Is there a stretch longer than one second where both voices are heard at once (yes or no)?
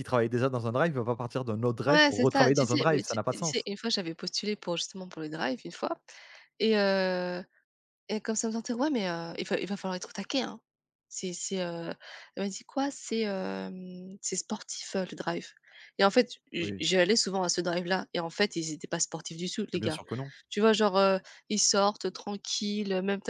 yes